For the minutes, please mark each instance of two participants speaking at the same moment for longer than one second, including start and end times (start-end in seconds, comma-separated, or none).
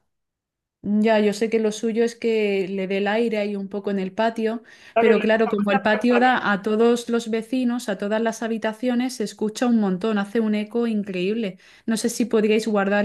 4.9-6.5